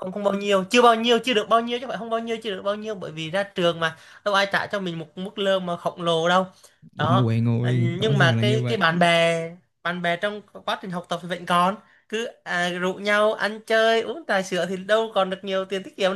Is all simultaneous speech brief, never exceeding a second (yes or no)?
no